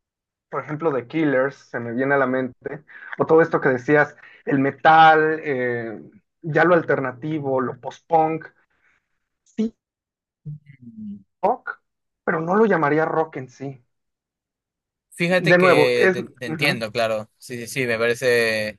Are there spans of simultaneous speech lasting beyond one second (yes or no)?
yes